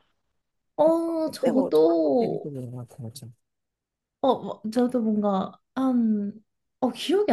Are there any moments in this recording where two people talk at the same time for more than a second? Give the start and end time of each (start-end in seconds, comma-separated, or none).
1.2-2.5